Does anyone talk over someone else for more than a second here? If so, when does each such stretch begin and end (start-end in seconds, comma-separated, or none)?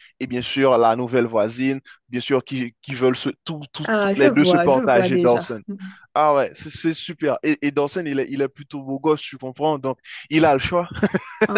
3.8-5.6